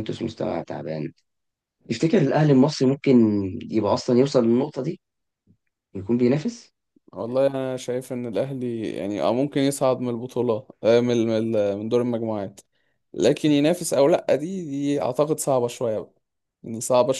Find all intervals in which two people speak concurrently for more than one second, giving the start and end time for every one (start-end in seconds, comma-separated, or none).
none